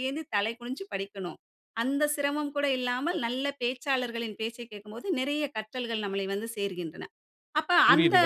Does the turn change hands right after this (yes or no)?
yes